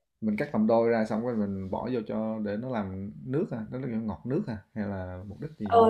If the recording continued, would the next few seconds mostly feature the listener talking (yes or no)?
yes